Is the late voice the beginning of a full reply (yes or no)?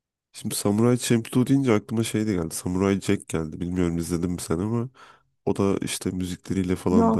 no